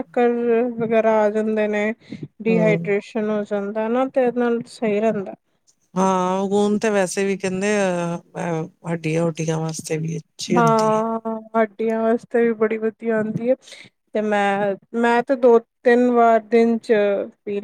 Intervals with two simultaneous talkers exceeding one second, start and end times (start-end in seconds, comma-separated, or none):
none